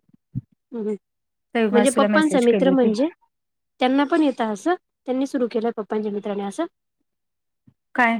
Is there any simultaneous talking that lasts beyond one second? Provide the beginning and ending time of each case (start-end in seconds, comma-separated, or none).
1.5-2.9